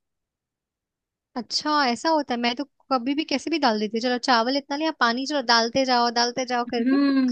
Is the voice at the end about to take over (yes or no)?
yes